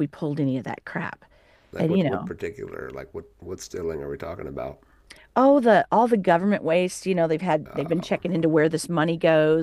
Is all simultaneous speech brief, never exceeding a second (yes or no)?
yes